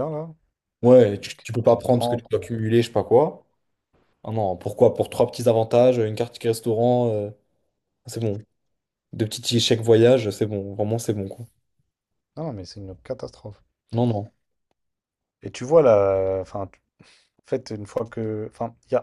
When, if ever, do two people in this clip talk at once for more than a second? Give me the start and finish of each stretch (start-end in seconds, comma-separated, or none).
1.3-2.5